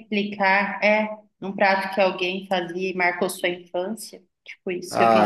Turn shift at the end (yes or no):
yes